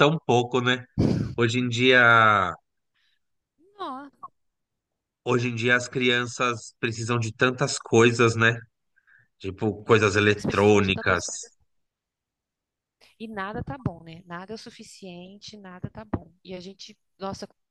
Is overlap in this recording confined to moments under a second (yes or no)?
no